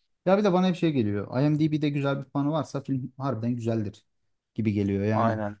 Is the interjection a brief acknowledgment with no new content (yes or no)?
yes